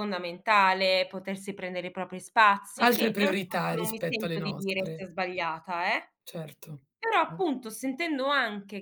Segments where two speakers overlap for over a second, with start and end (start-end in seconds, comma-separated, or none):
2.8-5.0